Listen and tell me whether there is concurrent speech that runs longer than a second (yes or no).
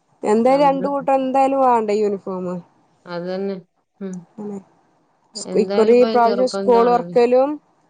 yes